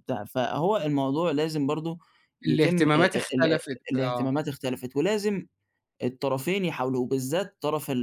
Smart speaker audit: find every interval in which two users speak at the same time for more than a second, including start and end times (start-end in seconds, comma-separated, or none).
2.5-4.5